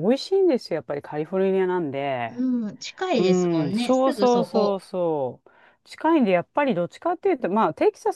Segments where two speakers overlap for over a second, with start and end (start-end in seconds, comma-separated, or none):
3.2-4.8